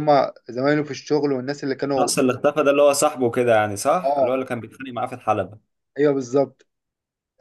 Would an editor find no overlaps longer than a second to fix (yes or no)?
yes